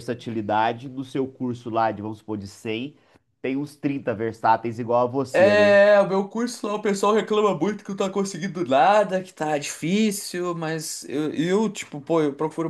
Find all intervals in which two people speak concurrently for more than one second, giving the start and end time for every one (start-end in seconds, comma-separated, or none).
none